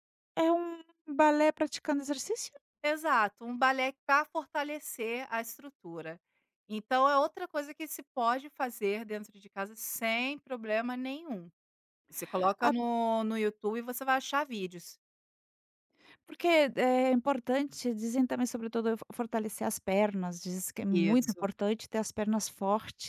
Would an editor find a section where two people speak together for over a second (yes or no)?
no